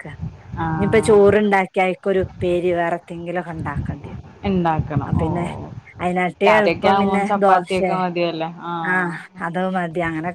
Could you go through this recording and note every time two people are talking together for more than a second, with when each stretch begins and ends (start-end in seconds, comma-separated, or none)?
6.5-7.9